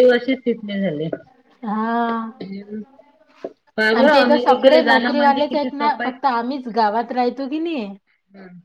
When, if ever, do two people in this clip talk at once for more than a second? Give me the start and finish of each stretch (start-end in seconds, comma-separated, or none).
4.0-6.1